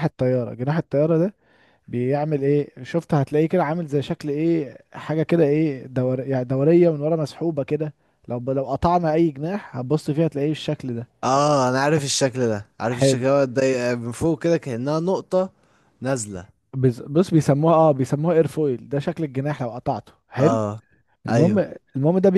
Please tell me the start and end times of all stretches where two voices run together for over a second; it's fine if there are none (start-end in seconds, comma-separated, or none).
none